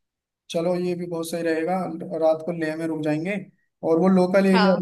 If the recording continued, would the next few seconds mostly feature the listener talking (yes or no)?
no